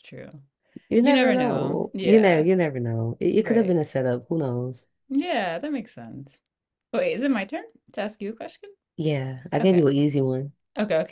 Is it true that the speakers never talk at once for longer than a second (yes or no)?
no